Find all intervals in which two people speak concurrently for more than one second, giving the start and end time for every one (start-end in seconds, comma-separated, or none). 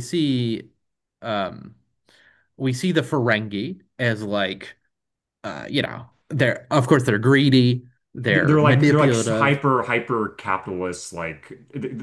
8.3-9.6